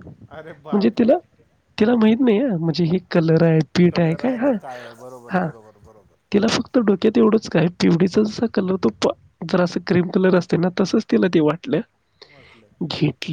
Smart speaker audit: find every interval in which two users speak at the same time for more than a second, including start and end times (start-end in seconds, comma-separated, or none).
3.9-5.5